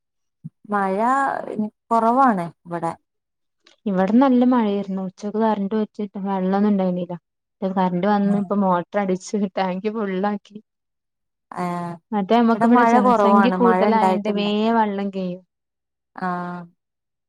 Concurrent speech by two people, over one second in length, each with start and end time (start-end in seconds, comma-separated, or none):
12.5-14.4